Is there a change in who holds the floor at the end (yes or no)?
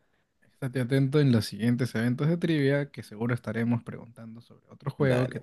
yes